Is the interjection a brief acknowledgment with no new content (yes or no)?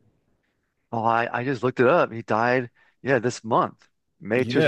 no